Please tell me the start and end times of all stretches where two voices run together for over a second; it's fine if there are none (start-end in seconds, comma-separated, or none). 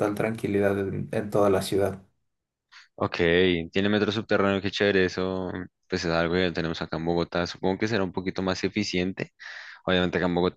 none